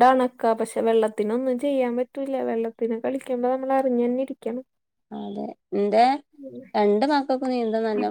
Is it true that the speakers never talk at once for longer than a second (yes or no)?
yes